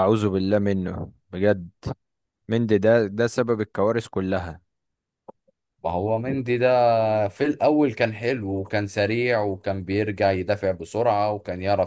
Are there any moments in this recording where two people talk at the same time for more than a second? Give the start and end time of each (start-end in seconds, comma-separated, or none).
none